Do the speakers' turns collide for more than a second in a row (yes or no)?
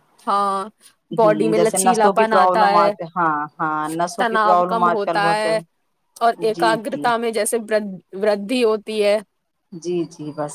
yes